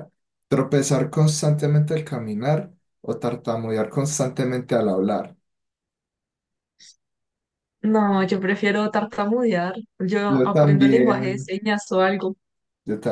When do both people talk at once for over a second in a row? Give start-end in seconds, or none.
10.3-11.5